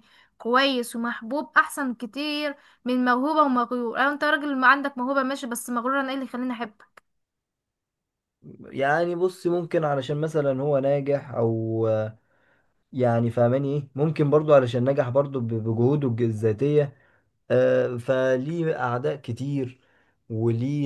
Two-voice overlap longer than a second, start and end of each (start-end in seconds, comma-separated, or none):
none